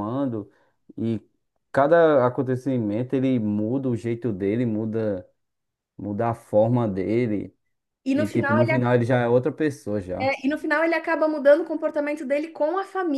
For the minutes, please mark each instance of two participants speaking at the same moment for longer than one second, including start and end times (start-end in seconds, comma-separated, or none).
none